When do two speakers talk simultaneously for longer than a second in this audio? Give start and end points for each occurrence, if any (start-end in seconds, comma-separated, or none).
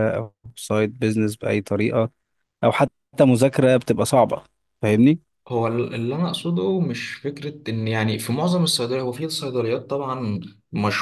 none